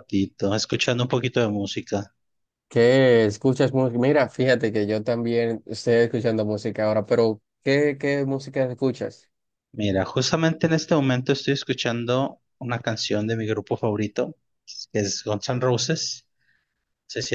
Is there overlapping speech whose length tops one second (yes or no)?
no